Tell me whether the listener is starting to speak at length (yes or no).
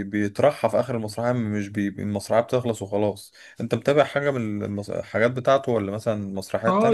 yes